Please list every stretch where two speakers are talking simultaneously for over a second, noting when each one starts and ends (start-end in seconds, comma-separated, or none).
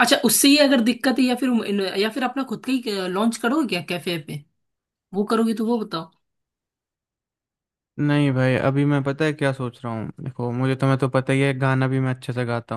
none